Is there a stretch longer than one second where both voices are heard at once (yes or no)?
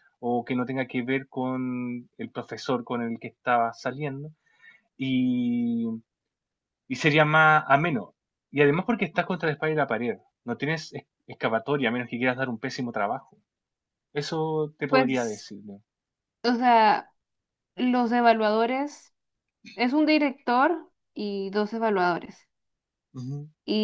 no